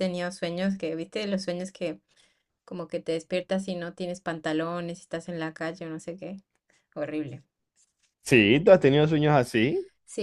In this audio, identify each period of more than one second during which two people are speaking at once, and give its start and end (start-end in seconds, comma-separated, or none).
none